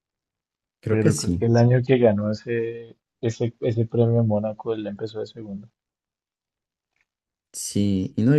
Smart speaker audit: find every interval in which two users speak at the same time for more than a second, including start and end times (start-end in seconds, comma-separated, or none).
none